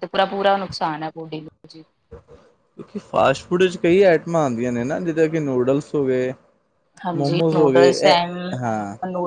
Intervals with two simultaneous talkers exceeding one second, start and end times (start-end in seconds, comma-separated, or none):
none